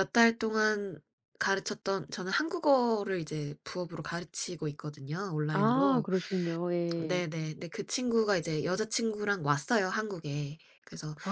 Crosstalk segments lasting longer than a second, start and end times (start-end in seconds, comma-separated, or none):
none